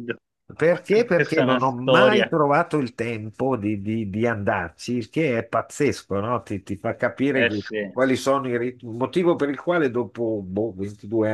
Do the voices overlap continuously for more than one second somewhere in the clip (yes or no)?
yes